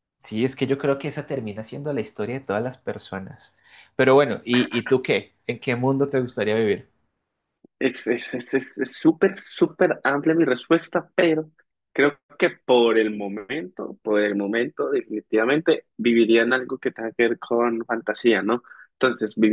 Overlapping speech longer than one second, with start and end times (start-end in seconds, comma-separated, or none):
none